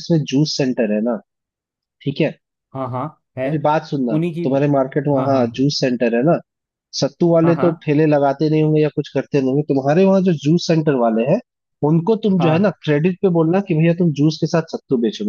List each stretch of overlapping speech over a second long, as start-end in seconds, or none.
none